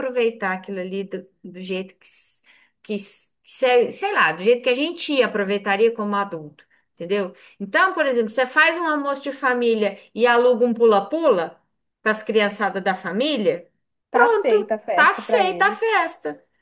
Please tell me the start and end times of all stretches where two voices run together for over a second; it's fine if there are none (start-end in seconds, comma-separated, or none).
14.1-16.0